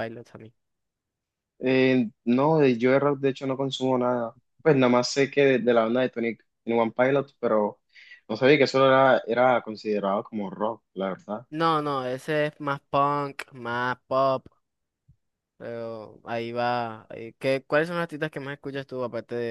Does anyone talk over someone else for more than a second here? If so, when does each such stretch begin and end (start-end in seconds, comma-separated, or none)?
none